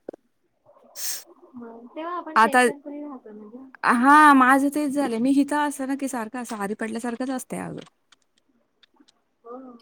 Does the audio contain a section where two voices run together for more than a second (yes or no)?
no